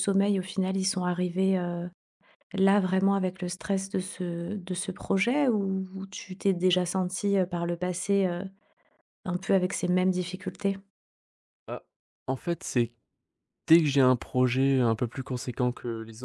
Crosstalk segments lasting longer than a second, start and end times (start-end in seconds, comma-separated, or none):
none